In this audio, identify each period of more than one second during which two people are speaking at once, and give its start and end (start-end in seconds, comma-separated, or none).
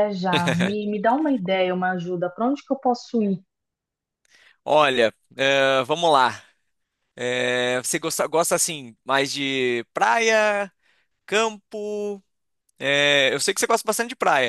none